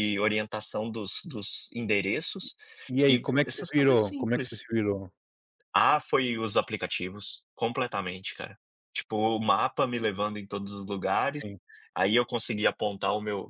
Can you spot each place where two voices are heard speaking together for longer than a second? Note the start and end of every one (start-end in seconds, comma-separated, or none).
3.1-4.7